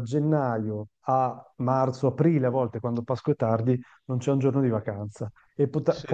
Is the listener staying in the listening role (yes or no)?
yes